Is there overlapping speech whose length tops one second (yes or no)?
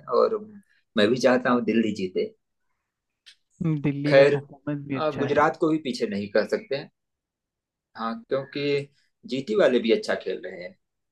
no